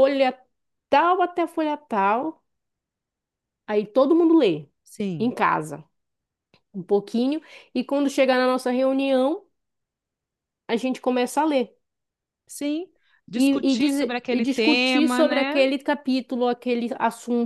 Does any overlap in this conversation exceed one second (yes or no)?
yes